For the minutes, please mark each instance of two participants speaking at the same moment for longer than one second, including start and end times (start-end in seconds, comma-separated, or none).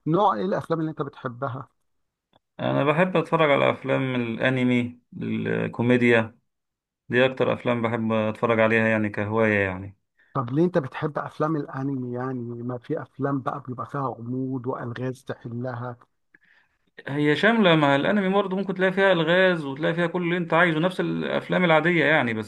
none